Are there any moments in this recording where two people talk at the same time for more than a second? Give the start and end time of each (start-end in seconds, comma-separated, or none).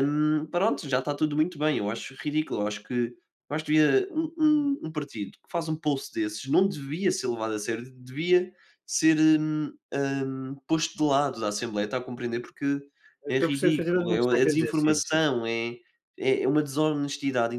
13.3-15.2